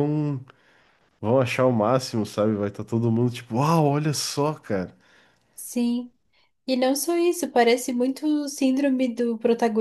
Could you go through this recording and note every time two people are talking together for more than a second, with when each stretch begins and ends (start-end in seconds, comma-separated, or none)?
none